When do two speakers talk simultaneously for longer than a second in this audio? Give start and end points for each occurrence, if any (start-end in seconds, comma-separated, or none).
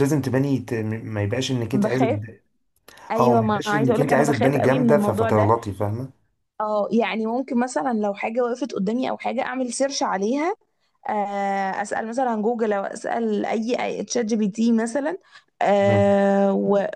3.2-5.5